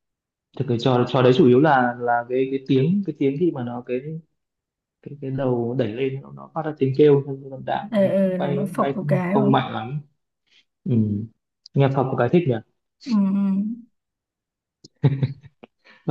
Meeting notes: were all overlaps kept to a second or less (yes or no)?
no